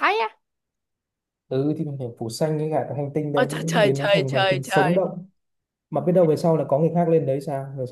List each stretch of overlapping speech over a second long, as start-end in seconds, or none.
3.3-5.0